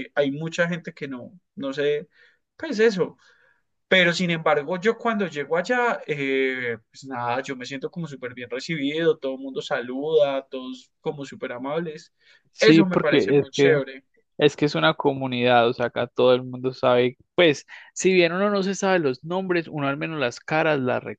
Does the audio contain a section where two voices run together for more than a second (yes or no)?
yes